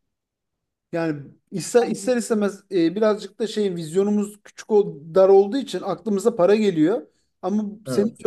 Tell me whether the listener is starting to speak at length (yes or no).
no